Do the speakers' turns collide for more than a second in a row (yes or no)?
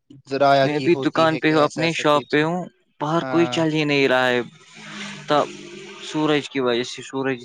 yes